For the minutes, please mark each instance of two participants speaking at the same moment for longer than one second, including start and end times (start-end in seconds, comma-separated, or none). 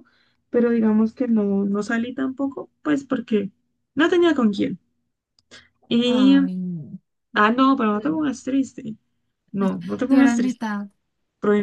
none